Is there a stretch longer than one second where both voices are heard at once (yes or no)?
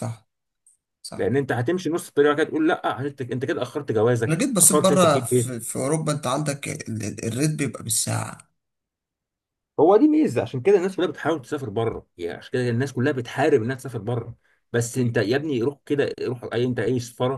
yes